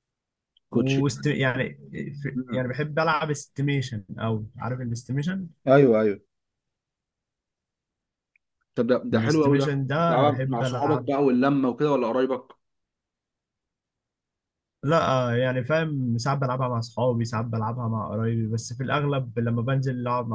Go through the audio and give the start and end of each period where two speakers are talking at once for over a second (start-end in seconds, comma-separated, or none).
9.1-11.1